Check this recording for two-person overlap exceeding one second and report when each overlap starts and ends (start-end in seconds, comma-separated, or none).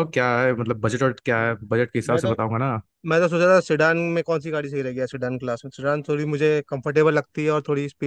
none